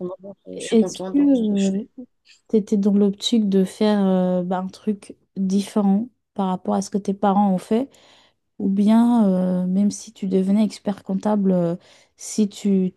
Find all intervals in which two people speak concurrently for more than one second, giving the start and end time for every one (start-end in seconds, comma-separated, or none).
0.5-1.8